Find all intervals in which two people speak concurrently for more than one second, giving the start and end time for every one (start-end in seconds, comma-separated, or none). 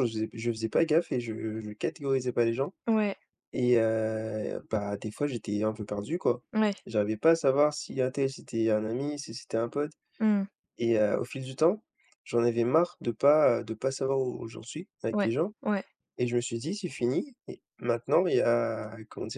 none